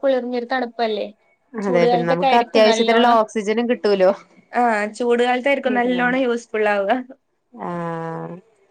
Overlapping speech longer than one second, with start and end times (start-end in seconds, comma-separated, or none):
1.7-3.1